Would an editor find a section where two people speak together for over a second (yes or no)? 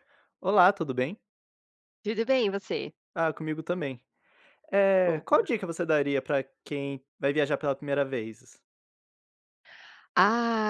no